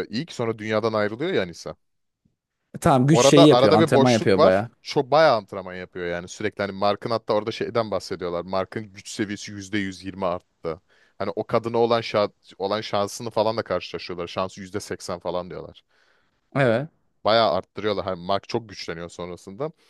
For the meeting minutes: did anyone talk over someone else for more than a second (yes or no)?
yes